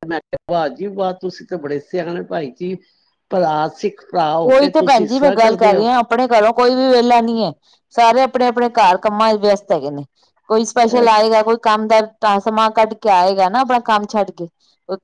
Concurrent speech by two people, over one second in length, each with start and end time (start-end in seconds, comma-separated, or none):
none